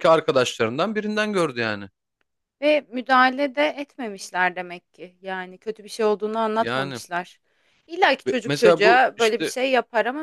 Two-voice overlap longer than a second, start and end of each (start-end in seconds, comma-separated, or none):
8.3-9.5